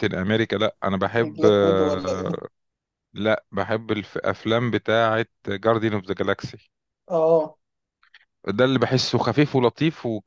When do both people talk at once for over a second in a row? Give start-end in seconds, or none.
1.2-2.4